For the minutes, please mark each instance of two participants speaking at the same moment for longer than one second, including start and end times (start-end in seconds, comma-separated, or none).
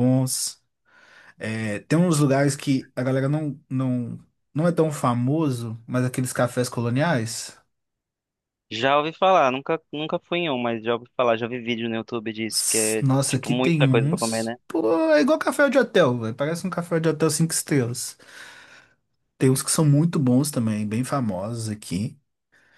12.5-14.6